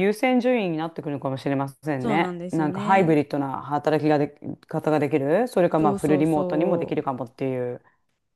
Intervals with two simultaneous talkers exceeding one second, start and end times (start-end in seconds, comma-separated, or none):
2.0-3.2, 5.8-7.0